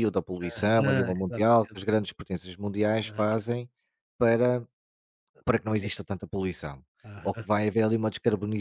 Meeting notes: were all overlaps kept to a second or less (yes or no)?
no